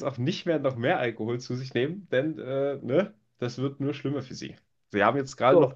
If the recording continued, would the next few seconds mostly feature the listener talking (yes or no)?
no